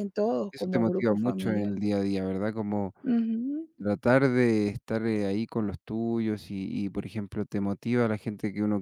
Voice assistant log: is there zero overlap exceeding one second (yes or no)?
no